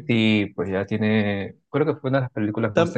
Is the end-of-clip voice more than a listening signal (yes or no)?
yes